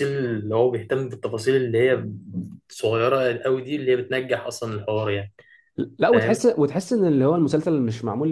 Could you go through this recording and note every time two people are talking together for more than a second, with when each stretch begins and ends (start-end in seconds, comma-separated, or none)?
none